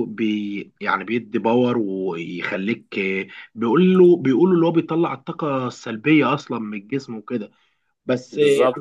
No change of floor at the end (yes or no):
yes